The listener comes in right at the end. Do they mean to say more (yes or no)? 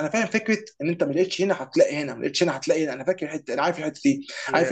no